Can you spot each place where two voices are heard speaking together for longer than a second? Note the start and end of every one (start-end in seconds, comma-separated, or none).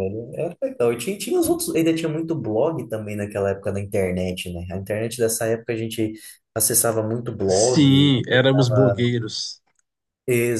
7.5-9.1